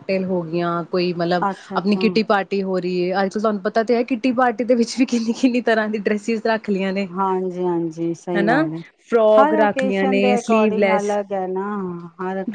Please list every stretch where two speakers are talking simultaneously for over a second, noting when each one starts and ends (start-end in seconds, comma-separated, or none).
9.4-11.2